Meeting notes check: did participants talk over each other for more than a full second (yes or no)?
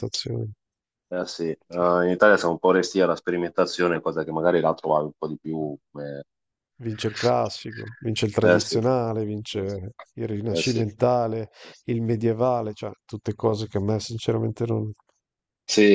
no